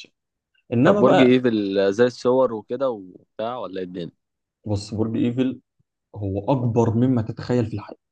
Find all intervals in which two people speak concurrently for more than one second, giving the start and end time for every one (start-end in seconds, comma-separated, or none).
none